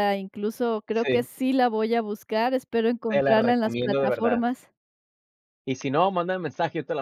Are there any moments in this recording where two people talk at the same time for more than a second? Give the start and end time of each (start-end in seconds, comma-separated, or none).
3.1-4.4